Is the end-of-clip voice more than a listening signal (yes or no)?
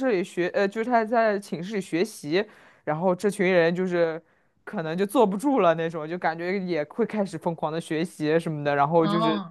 no